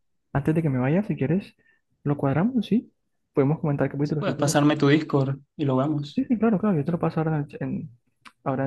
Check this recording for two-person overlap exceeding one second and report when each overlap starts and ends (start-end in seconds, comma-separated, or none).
none